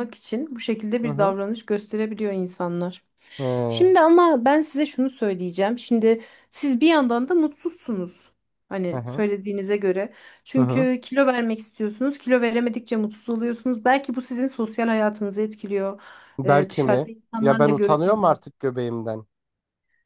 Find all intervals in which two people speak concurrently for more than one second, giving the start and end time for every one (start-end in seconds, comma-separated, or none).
16.4-18.5